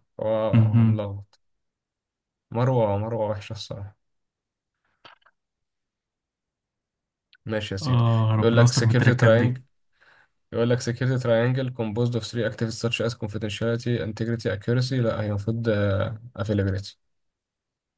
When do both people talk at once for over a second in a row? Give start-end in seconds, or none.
7.8-9.6